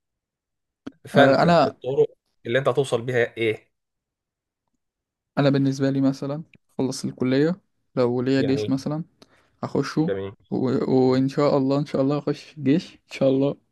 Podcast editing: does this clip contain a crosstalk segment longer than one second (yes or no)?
no